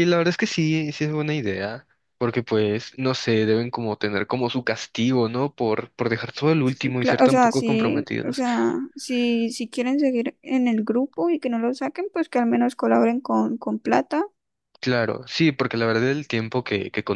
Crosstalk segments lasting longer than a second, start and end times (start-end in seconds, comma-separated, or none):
6.6-8.4